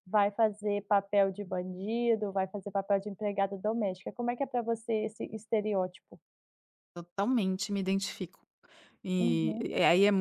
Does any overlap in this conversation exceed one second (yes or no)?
no